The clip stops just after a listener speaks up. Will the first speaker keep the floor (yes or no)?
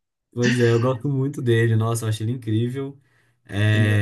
yes